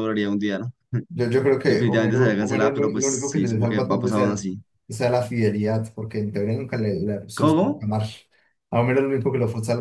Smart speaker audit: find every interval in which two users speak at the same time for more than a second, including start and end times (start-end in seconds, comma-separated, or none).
1.7-4.4